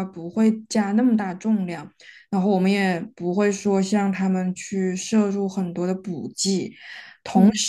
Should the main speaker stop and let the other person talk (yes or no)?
no